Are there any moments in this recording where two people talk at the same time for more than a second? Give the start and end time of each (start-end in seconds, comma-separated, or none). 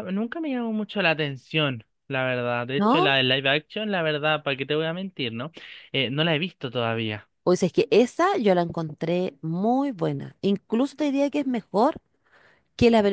none